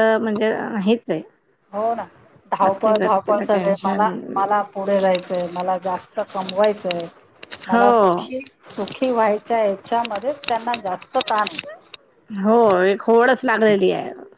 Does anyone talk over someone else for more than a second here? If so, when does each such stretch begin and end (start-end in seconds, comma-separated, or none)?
2.6-4.0